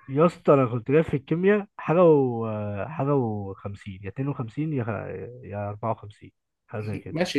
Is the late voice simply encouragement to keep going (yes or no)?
no